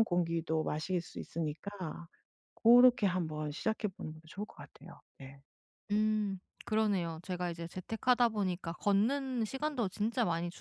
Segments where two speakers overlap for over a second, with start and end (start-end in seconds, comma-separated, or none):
none